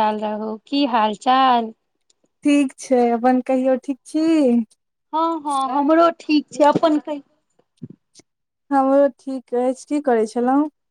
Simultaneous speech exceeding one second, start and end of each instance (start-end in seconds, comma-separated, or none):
none